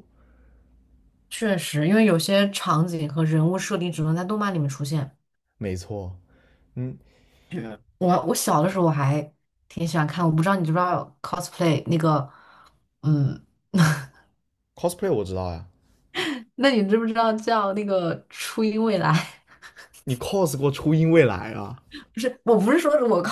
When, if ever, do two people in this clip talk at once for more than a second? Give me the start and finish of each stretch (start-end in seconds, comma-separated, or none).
none